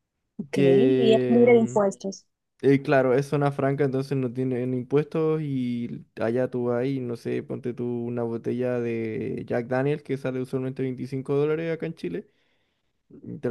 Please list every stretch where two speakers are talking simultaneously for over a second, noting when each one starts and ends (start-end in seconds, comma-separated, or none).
0.5-1.8